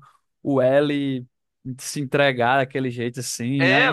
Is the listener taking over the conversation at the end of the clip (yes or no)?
yes